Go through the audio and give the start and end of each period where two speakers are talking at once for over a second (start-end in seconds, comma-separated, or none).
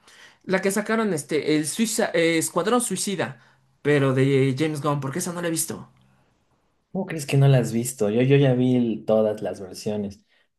none